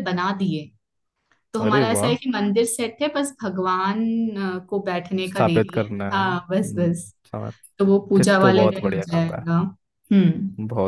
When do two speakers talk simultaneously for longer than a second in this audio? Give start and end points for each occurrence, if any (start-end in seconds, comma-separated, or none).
5.2-6.9, 8.2-9.5